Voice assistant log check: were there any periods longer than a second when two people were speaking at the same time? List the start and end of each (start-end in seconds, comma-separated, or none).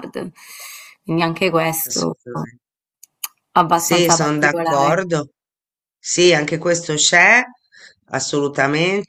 3.7-5.0